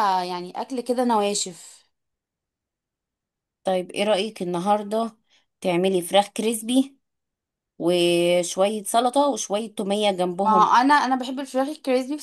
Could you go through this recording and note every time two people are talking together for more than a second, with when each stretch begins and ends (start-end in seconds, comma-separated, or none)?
none